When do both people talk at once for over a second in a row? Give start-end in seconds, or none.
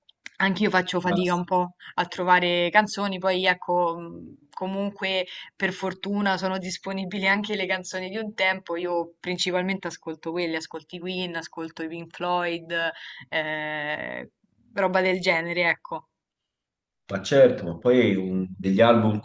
none